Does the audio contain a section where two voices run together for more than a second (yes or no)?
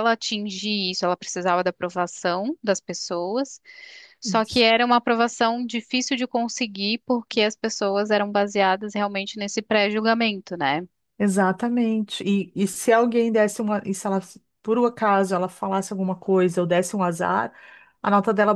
no